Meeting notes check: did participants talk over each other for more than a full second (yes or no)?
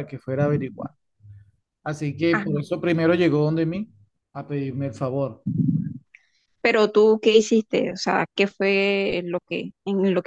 no